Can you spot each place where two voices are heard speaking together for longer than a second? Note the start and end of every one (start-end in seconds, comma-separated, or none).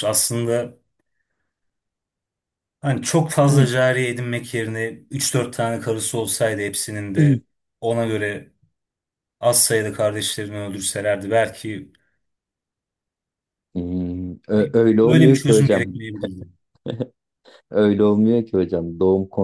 14.5-15.9